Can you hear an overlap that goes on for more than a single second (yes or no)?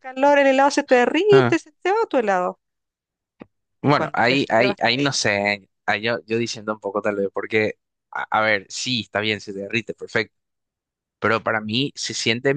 yes